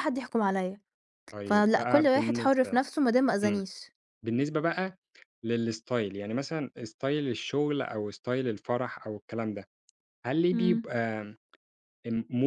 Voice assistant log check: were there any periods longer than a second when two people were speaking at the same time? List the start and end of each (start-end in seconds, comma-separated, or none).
1.4-2.8